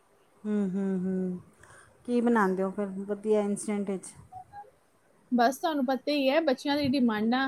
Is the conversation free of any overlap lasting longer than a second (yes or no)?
yes